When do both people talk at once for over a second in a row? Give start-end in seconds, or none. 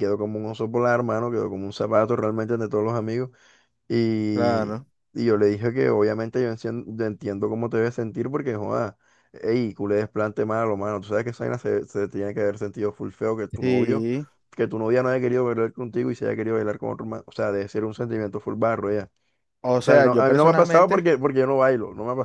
19.8-21.1